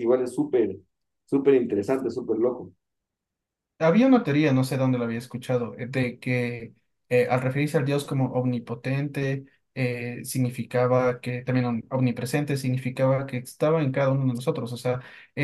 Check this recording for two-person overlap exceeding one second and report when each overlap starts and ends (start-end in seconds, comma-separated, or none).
none